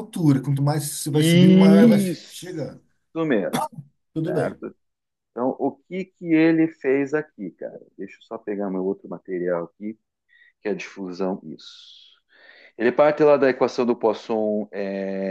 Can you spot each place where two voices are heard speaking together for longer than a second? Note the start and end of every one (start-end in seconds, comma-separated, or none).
1.1-2.5